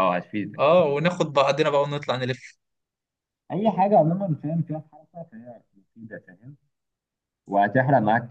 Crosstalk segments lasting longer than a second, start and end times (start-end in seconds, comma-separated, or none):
none